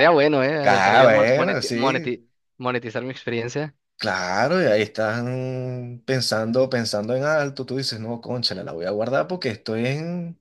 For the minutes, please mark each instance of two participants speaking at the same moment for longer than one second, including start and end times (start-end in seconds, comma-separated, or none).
0.6-2.1